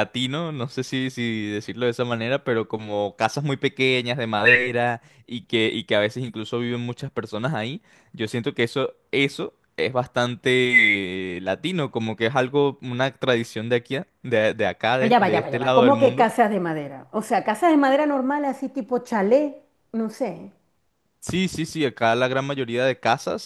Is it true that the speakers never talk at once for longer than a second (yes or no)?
no